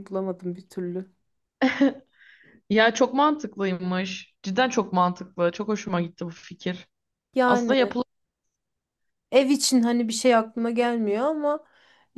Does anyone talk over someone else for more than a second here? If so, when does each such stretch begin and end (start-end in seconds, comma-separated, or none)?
none